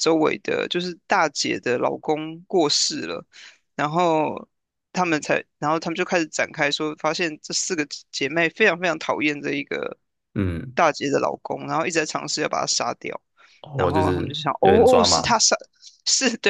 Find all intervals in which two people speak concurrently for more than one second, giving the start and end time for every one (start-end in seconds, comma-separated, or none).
13.8-15.4